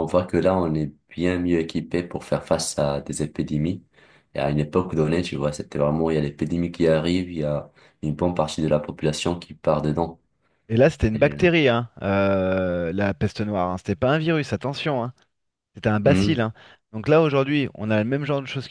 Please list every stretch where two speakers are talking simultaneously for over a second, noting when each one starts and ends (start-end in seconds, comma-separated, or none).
none